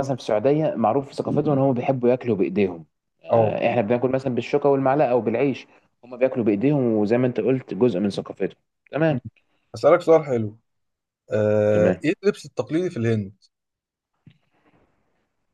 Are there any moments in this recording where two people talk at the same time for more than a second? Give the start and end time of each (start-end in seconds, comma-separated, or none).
none